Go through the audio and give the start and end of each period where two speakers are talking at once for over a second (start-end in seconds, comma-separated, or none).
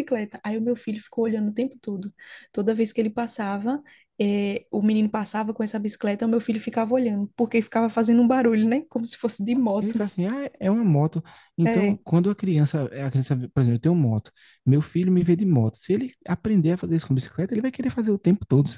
none